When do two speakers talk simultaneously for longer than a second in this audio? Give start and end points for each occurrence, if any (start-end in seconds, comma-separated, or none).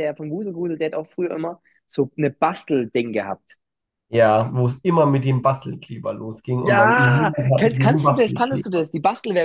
6.6-8.9